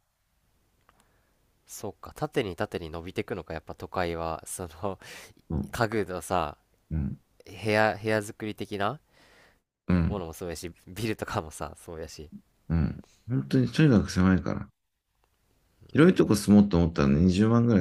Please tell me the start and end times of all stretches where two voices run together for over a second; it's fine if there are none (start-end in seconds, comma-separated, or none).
none